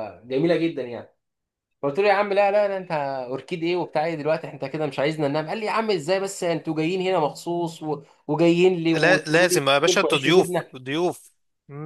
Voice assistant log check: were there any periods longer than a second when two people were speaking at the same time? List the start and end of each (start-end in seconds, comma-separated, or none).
8.9-10.8